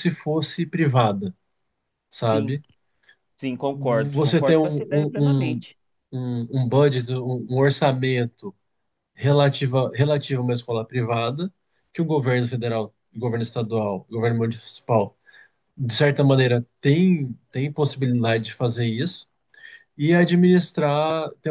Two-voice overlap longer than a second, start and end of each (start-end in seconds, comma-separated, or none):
4.1-5.6